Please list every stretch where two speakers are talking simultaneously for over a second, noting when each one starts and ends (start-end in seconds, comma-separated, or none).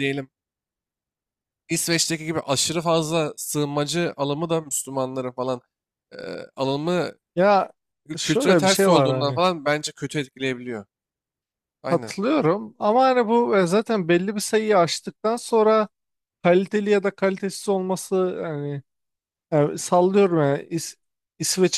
8.2-9.4